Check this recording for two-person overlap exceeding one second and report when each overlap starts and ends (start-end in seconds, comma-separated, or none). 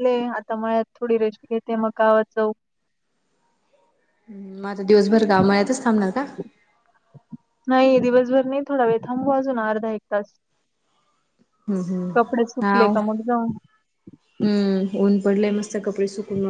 none